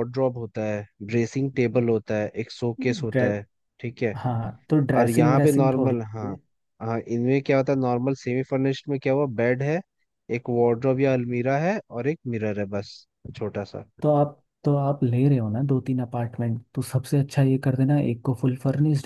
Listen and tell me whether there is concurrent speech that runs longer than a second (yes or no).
yes